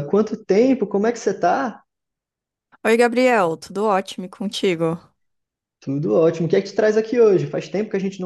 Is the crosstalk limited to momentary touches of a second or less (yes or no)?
yes